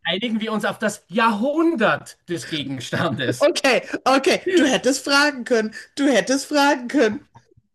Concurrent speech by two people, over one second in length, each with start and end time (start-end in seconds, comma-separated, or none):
none